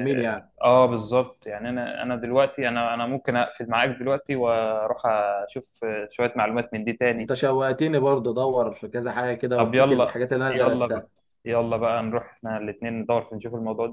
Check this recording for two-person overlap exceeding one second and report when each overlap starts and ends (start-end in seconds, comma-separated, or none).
9.6-11.1